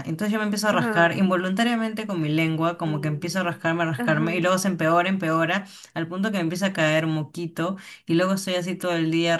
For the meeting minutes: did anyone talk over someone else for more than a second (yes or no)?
yes